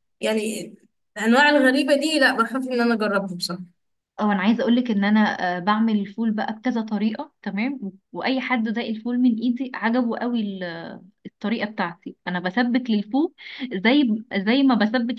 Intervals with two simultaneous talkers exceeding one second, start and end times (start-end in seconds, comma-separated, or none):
none